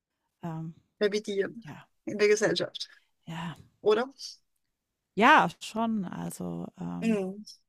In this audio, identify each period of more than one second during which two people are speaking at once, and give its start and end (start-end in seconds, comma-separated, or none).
none